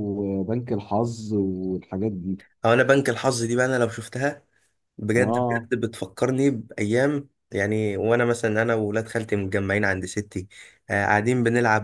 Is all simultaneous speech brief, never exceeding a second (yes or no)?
yes